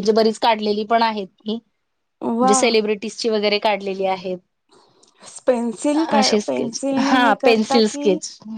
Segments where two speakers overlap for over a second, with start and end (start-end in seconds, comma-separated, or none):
5.9-8.1